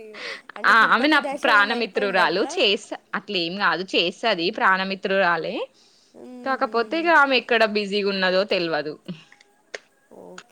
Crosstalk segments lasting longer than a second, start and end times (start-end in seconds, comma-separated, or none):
0.7-2.5